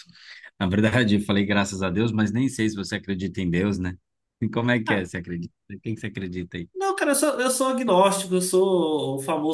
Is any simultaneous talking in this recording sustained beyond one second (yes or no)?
no